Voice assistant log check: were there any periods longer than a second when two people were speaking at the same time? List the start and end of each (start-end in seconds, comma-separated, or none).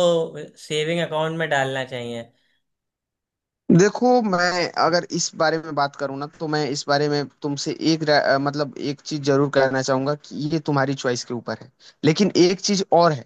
none